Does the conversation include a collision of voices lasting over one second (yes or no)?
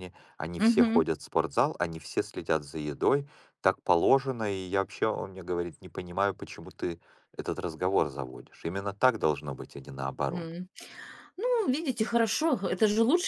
no